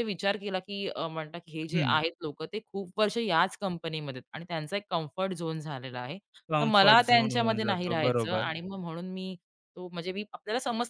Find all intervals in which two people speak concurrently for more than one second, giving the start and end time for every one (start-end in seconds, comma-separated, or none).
6.6-8.5